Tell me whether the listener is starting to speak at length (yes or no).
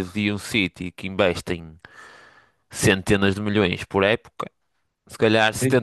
no